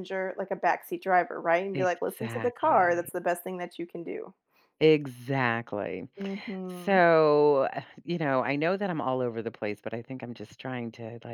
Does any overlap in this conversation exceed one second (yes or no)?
yes